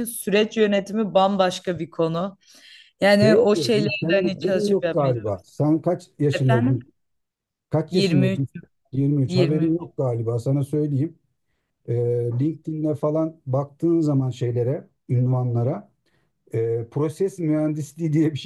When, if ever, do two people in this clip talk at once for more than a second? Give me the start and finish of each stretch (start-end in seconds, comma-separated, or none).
3.2-5.3